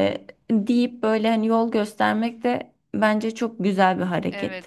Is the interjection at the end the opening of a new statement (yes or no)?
yes